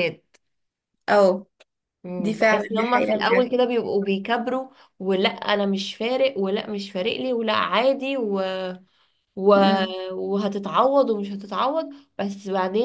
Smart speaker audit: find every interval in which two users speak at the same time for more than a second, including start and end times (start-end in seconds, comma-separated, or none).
2.2-3.5